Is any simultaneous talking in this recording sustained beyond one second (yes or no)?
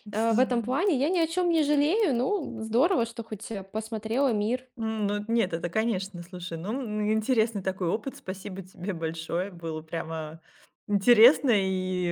no